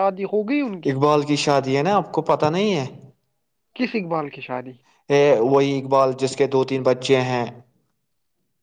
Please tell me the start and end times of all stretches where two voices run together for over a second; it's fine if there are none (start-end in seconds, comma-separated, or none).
none